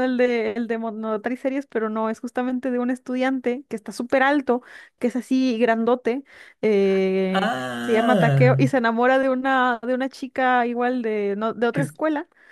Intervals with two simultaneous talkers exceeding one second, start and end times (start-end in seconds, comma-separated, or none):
7.3-8.7